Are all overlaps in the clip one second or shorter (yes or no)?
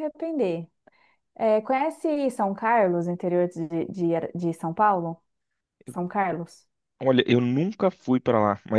yes